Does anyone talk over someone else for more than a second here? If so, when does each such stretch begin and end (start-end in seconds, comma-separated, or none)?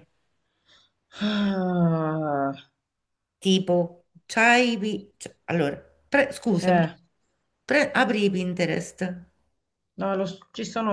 none